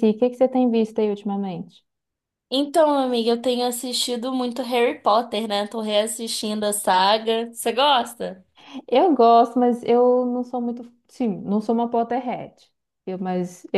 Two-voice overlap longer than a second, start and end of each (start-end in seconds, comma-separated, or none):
none